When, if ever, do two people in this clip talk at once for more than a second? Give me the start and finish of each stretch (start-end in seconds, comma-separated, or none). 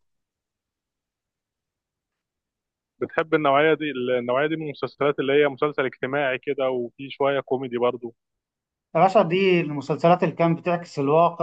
none